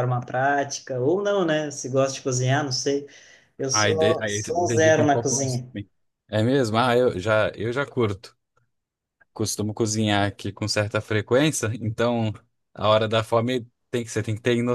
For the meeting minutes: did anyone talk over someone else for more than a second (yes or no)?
yes